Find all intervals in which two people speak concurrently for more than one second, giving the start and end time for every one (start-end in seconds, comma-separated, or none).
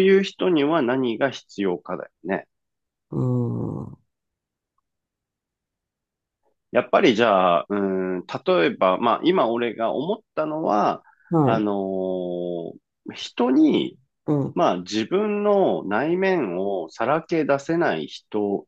none